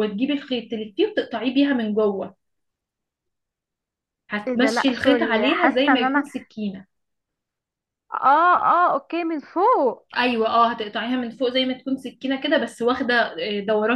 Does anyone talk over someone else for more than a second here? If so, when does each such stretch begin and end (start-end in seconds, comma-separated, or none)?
4.5-6.3